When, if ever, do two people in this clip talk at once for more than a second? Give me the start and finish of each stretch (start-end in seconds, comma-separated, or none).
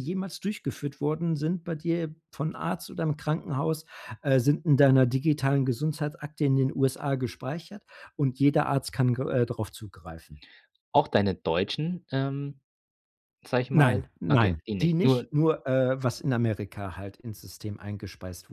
13.7-15.3